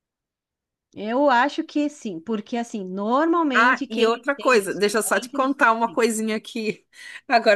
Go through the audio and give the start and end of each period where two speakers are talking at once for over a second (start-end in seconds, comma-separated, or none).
3.5-5.6